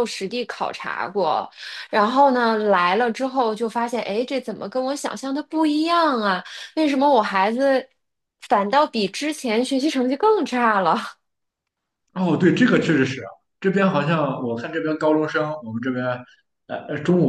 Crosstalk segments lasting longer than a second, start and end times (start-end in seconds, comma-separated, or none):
none